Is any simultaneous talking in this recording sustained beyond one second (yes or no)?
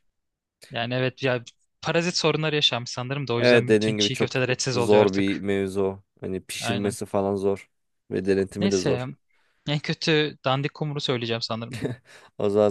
yes